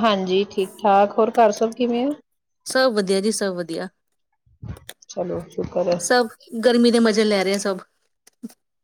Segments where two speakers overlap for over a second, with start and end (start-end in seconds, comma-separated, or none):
none